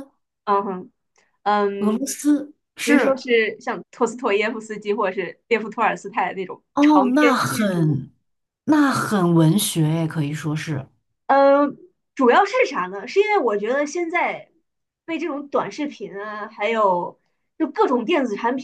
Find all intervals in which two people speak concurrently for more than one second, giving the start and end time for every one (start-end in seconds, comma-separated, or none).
6.7-8.0